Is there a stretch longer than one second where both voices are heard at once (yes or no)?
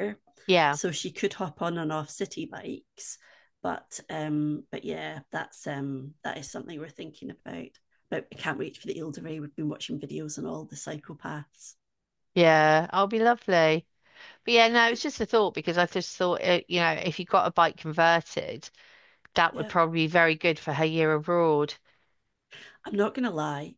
no